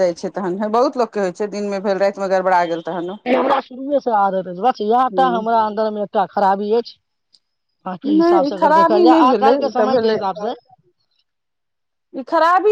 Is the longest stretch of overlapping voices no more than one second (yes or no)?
no